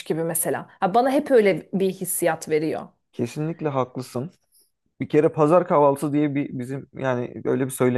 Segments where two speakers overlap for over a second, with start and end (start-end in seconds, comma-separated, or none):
none